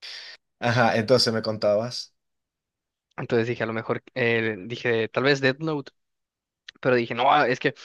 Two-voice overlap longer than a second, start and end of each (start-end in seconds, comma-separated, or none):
none